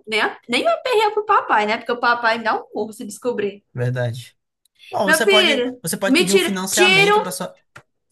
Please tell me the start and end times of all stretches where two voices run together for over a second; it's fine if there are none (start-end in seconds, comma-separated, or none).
5.1-7.2